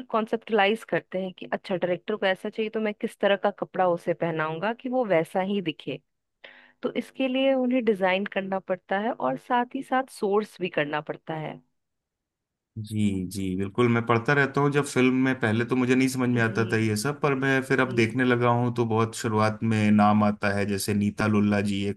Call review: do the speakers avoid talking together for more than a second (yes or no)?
yes